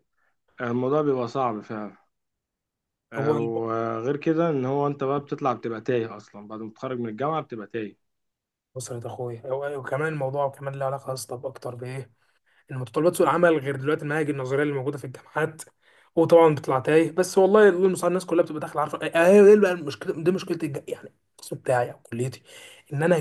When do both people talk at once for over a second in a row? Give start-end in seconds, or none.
none